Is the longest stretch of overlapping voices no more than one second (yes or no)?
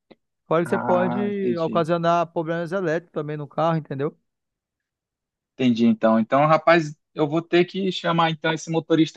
no